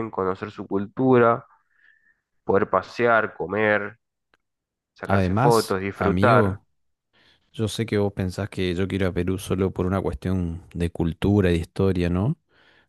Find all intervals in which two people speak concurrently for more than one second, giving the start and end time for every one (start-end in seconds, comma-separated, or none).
5.1-6.6